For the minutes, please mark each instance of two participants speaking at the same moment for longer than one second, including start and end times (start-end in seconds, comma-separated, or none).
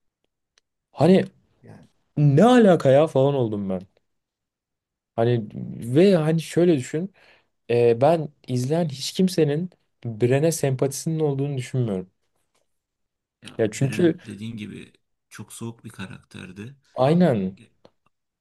none